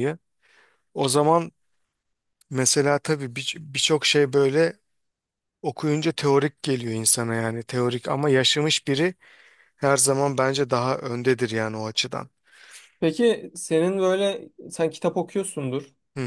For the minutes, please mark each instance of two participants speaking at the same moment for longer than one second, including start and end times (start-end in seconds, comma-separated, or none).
none